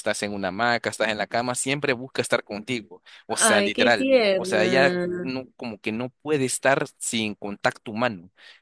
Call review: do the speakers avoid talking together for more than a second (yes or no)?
no